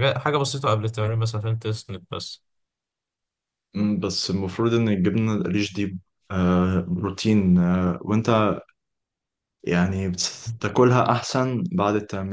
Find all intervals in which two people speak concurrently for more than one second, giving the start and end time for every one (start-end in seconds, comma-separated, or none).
none